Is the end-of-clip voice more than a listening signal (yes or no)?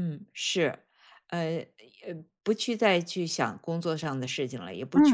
no